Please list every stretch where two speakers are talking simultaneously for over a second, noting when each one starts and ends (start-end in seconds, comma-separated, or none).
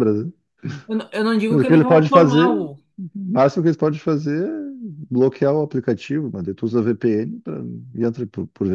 1.5-2.8